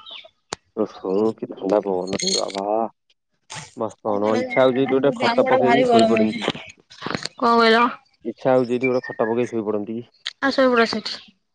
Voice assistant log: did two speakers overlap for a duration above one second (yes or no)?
yes